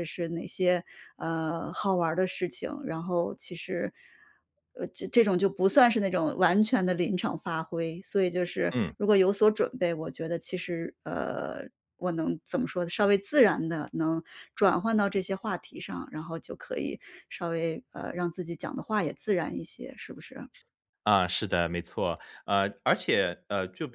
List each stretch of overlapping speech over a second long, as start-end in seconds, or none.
none